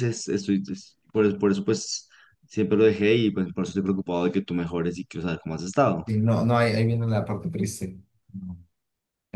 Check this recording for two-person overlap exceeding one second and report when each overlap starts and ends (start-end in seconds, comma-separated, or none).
none